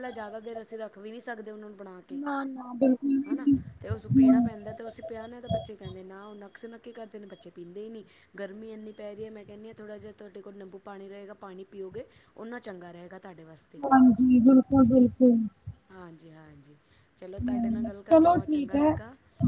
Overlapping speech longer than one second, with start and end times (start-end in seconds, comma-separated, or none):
17.4-18.9